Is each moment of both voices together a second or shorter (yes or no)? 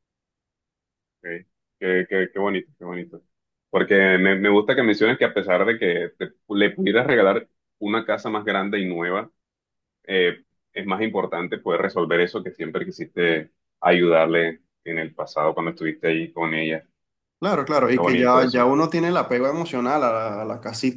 no